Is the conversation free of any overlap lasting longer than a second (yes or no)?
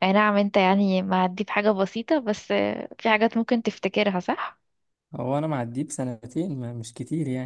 yes